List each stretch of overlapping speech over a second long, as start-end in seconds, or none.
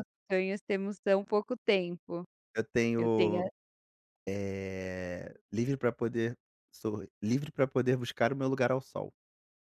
none